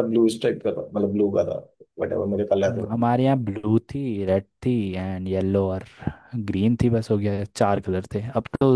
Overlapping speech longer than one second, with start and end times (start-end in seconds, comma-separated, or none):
none